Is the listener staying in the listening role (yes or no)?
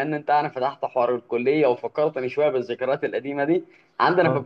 yes